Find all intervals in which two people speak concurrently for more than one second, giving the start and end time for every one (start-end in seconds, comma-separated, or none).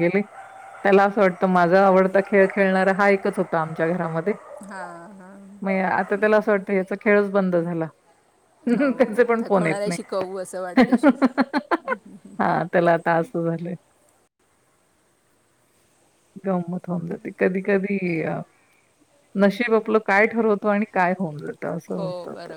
8.8-10.2